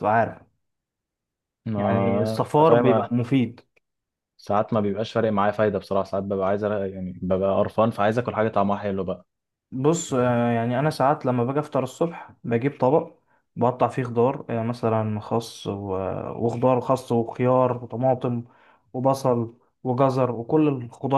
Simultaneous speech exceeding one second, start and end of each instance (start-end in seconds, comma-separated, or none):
1.8-3.1